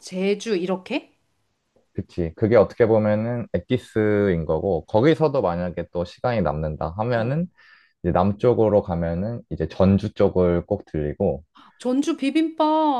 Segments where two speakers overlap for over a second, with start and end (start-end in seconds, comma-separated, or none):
none